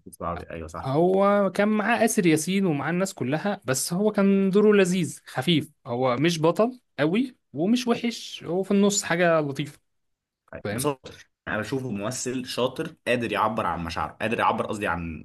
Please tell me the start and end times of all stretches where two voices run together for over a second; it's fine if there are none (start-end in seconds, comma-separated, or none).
none